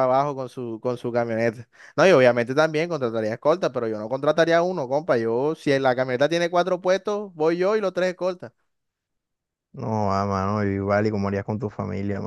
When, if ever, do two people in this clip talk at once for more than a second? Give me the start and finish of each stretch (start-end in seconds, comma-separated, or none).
none